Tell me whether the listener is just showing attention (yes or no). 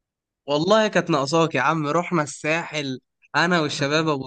yes